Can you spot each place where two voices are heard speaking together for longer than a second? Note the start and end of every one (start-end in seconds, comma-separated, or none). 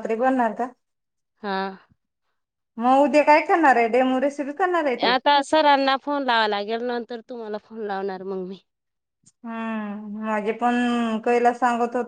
none